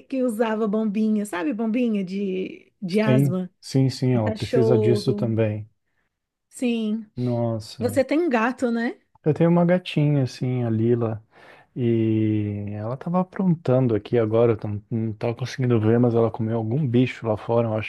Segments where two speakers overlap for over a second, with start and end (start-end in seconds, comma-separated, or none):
4.1-5.3